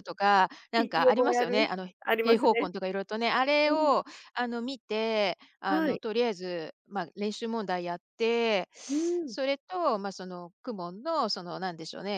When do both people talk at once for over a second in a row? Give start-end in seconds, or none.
0.8-2.7